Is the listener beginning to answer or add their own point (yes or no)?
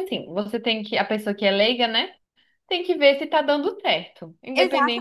yes